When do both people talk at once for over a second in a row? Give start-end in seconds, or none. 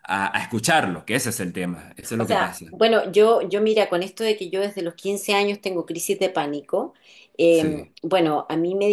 none